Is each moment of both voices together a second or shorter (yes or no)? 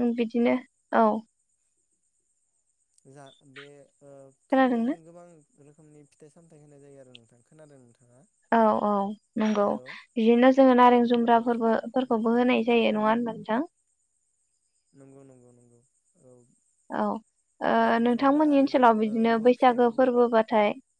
no